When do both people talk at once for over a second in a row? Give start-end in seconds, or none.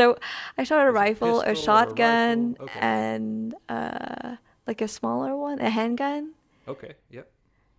0.9-2.8